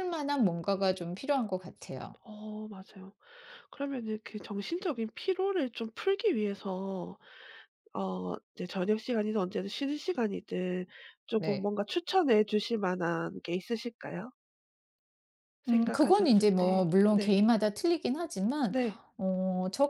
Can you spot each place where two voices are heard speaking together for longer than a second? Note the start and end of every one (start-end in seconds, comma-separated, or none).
15.7-17.4